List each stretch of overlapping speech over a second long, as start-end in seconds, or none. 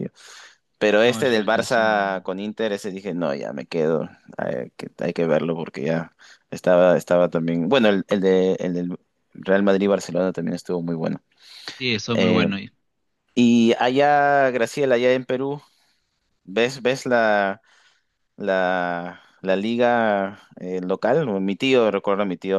1.0-2.2